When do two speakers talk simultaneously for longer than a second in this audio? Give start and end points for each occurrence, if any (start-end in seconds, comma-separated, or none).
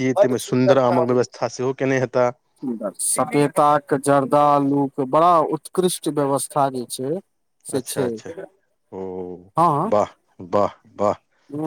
none